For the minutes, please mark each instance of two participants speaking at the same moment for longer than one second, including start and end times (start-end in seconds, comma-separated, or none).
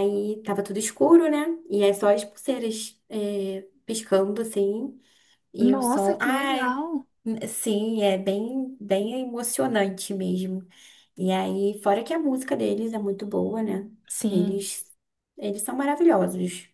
5.6-6.8